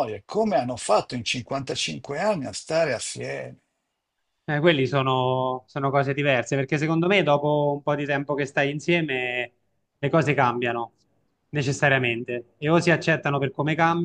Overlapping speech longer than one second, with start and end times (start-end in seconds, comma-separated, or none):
none